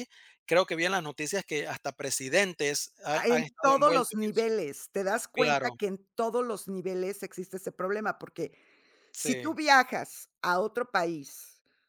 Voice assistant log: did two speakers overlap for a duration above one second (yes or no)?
yes